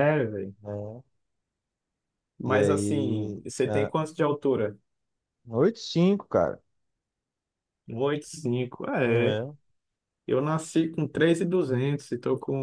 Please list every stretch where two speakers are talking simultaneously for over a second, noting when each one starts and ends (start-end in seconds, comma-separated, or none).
2.5-3.9